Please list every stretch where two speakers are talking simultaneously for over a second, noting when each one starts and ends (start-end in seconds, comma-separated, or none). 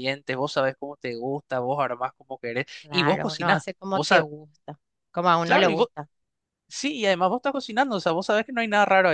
2.8-4.2